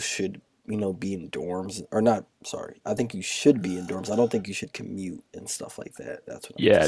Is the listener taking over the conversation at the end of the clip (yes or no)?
yes